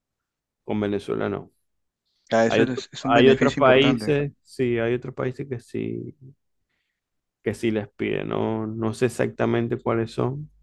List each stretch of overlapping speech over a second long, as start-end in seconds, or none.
2.5-4.1